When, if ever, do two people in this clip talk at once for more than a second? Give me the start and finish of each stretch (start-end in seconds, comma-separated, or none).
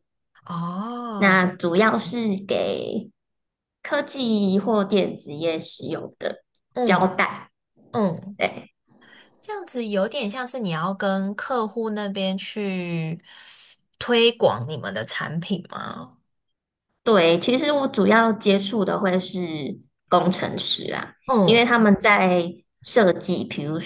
none